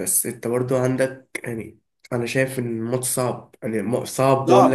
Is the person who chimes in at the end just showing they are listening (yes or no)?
no